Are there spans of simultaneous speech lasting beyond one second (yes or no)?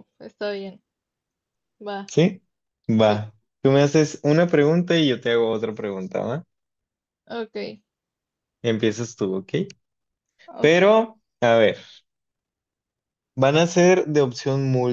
no